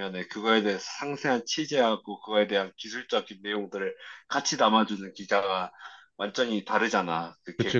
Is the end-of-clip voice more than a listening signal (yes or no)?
yes